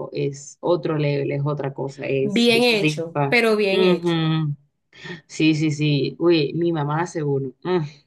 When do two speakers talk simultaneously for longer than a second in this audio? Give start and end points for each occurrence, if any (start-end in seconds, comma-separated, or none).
2.2-4.2